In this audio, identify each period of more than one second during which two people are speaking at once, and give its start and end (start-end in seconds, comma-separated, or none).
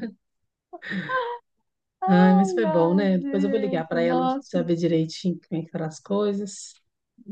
2.1-4.6